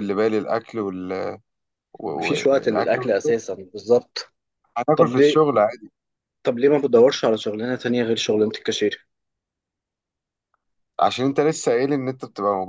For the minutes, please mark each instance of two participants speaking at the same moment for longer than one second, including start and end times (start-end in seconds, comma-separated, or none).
2.2-3.4